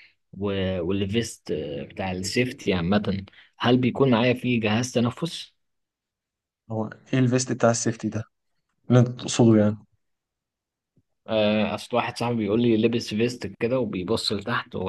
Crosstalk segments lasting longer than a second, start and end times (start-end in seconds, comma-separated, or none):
none